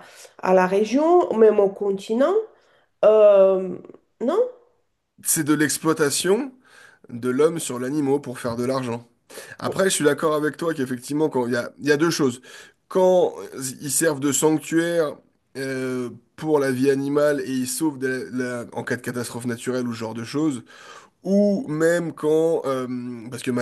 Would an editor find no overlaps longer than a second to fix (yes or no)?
yes